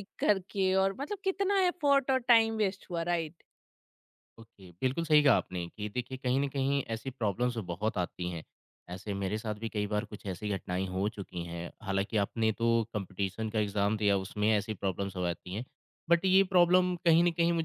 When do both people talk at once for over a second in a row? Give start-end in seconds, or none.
none